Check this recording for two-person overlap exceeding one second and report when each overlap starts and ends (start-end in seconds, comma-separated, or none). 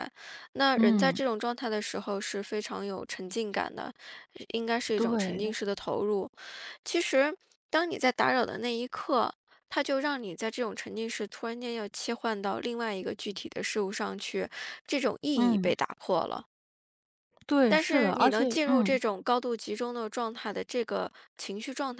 17.7-19.0